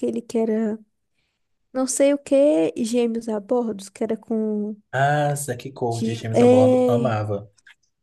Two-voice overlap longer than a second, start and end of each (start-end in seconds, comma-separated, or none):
5.9-7.1